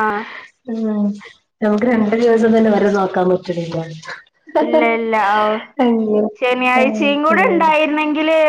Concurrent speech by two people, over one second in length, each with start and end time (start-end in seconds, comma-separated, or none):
none